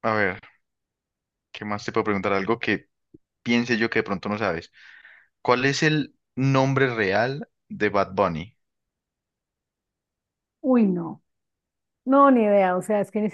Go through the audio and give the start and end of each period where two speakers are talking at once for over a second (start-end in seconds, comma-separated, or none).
none